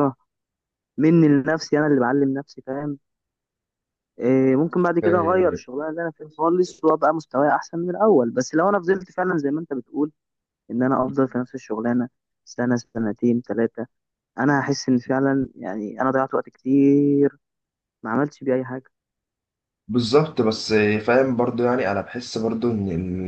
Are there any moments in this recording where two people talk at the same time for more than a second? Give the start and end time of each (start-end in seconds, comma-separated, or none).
none